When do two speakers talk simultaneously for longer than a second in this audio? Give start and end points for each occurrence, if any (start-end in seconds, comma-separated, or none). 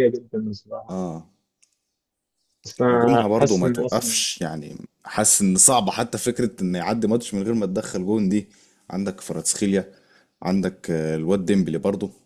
2.9-4.2